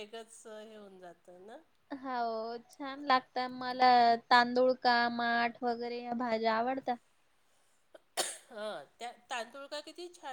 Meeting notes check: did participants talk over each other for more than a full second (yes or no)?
no